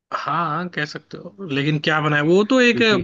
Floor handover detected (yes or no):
no